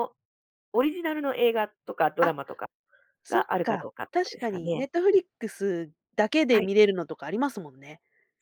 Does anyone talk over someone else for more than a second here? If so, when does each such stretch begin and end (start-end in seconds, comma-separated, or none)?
3.3-4.8